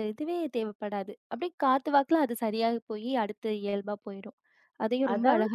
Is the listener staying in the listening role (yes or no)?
no